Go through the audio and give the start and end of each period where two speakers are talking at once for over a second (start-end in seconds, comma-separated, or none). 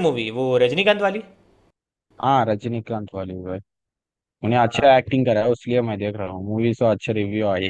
none